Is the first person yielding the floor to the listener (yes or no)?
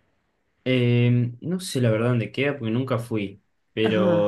no